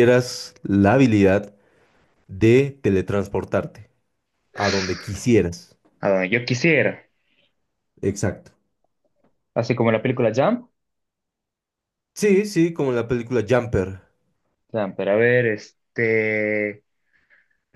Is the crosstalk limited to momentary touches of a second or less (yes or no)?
yes